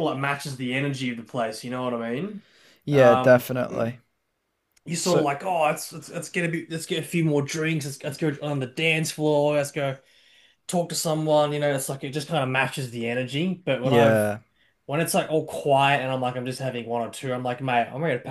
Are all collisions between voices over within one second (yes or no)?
yes